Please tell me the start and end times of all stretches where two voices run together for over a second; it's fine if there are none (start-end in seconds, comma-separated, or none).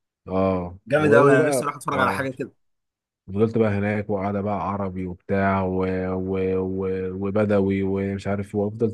0.9-2.3